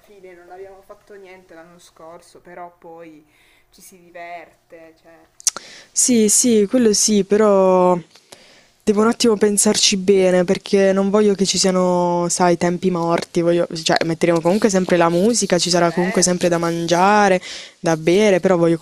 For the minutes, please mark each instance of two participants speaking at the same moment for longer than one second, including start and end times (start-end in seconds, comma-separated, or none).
15.8-17.2